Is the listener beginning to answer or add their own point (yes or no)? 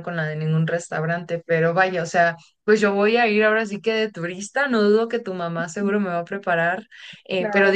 no